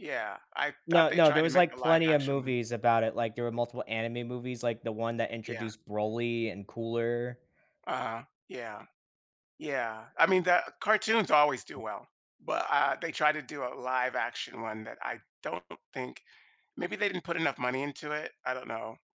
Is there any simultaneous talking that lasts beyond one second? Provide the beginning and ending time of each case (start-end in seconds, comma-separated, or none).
0.9-2.5